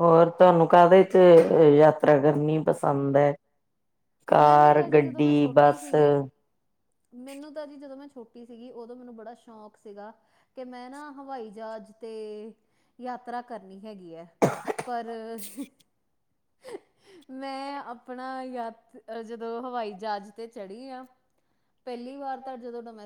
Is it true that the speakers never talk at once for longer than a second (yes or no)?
no